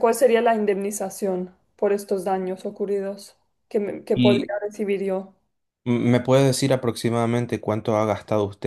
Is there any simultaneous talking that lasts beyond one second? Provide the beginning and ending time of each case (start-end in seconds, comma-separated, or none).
none